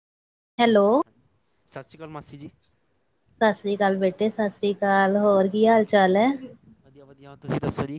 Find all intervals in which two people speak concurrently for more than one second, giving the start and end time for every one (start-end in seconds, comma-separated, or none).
none